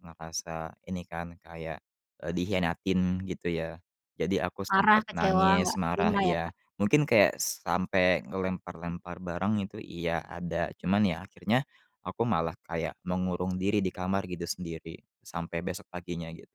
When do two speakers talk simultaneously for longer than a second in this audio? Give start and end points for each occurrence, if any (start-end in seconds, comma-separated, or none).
4.7-6.5